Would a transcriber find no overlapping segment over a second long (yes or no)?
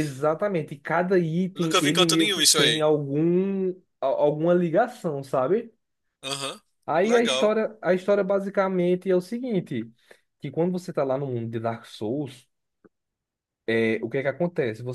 no